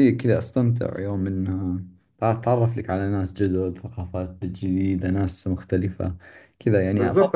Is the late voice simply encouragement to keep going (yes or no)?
no